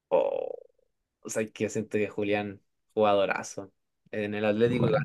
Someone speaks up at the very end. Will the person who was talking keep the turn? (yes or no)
yes